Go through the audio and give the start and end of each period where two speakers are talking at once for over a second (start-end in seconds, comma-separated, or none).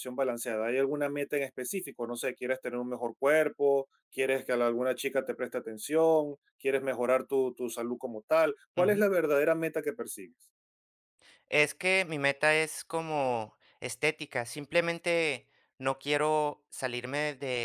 none